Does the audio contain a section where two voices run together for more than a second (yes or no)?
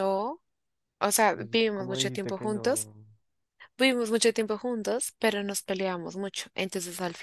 yes